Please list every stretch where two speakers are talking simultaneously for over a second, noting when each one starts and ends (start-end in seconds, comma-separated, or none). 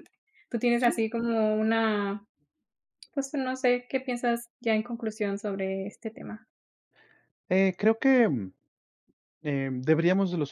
none